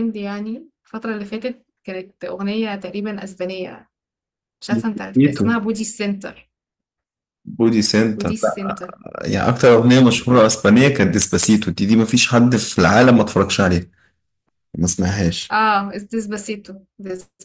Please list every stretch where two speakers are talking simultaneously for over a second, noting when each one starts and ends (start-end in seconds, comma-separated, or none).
none